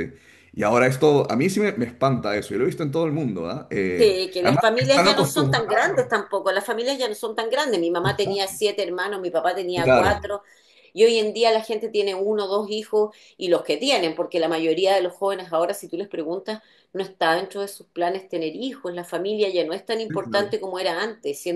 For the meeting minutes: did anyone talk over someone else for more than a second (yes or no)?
yes